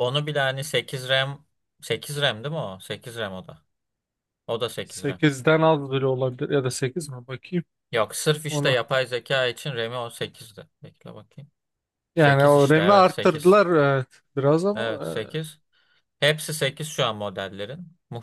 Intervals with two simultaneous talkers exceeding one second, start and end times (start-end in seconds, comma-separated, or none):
12.2-13.6